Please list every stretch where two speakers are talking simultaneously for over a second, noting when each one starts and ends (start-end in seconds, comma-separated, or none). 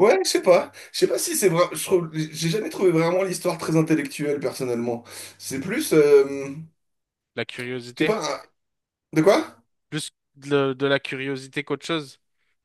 none